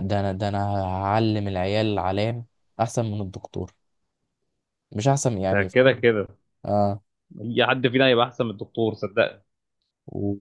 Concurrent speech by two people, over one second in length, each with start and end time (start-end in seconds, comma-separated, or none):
none